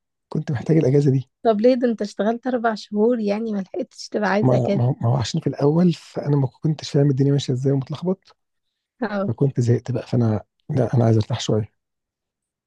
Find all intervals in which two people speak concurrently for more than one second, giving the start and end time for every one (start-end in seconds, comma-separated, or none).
none